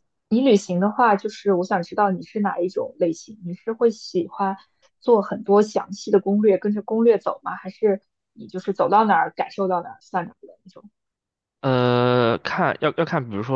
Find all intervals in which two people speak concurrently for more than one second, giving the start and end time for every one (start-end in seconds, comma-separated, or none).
none